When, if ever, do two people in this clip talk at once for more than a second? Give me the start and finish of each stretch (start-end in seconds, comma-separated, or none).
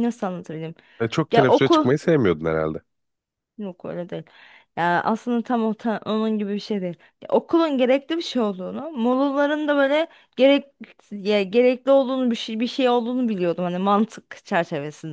none